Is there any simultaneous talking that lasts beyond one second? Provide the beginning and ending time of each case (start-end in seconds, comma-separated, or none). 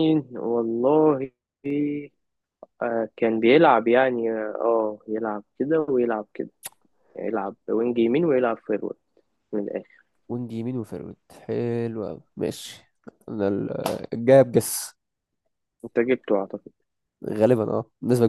none